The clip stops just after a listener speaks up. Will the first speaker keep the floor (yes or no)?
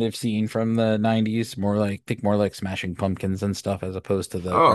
no